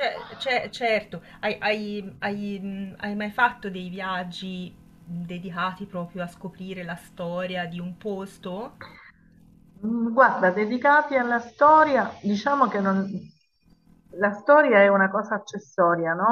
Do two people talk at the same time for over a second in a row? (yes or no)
no